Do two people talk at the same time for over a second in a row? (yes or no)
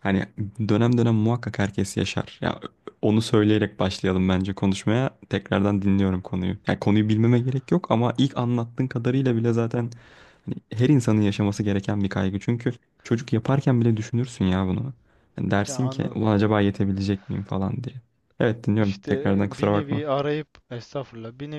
yes